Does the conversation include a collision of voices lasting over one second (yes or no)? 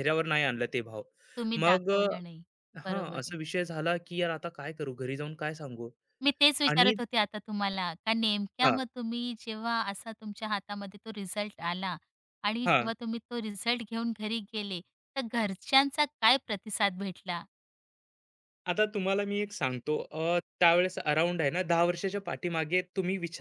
no